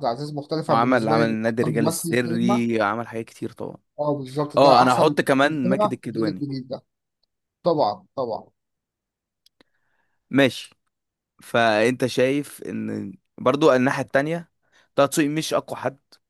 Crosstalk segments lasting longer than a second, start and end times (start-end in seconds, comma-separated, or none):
0.7-2.6, 4.6-6.4